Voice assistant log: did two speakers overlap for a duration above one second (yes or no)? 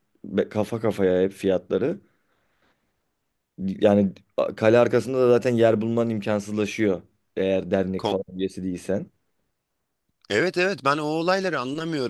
no